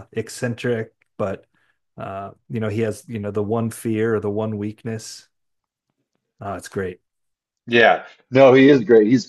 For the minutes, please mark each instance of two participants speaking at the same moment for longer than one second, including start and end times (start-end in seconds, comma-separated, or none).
none